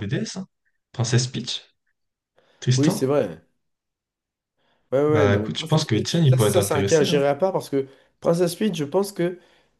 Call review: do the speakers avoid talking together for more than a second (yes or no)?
no